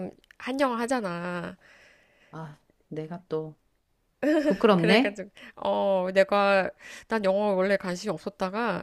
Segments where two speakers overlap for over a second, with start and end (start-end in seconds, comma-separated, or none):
none